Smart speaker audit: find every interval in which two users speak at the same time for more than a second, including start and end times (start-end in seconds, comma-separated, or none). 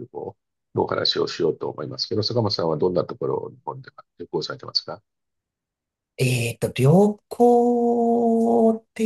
none